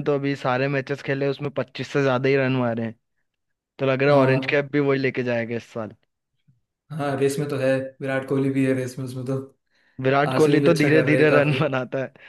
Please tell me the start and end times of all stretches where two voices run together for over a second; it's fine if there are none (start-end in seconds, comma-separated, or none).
10.3-11.6